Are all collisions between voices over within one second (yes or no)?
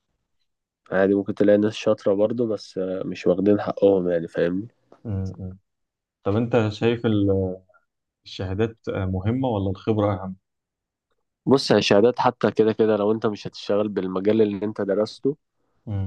yes